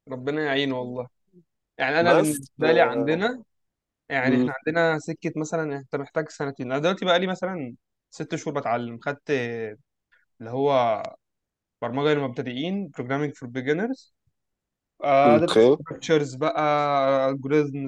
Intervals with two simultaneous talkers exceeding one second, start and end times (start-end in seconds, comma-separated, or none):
2.0-3.3